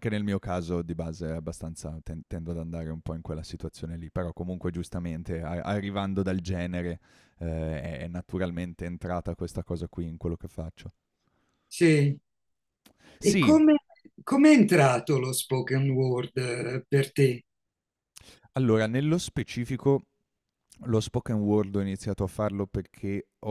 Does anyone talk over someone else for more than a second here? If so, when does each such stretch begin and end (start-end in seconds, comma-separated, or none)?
none